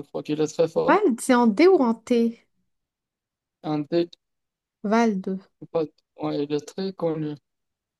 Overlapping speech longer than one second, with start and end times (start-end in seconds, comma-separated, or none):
none